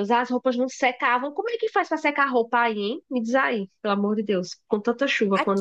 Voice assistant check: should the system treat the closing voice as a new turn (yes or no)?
yes